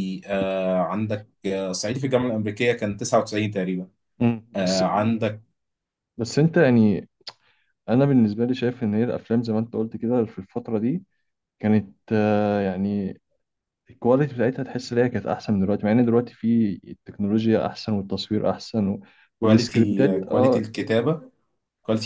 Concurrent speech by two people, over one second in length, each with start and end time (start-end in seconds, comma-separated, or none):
19.4-20.7